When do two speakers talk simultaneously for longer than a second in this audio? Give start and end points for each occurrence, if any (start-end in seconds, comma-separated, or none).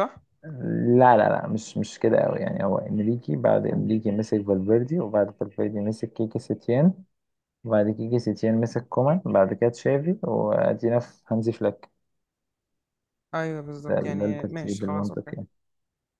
13.9-15.3